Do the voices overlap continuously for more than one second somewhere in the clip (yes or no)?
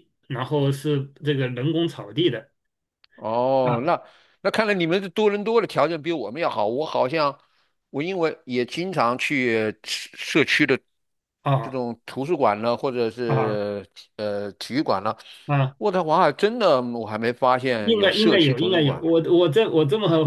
yes